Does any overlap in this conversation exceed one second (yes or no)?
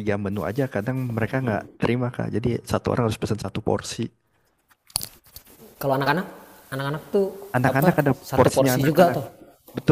yes